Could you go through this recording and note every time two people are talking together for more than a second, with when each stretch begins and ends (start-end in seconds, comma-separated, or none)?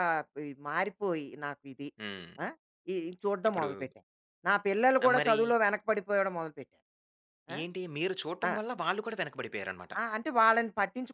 none